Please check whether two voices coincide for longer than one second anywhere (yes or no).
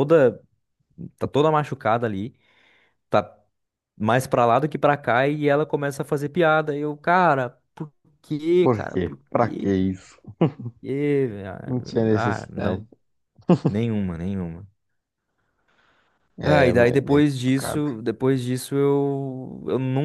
yes